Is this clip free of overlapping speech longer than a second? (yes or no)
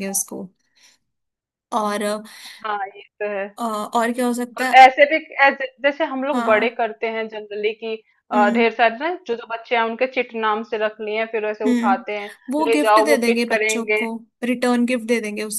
no